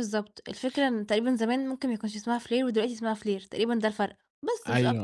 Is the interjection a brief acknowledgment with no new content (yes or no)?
no